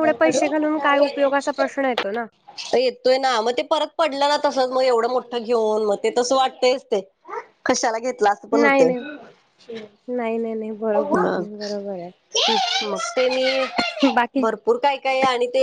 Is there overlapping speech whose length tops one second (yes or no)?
no